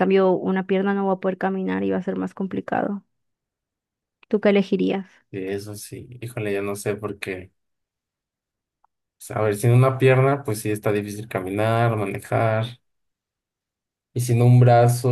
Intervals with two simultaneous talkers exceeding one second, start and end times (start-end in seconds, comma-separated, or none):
none